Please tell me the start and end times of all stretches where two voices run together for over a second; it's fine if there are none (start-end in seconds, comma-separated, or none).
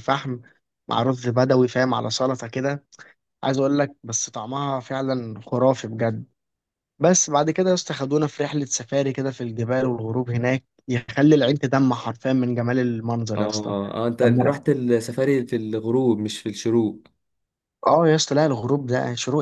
none